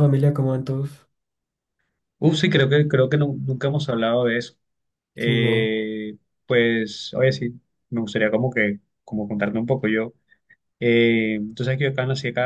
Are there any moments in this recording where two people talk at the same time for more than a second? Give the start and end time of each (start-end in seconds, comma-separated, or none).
none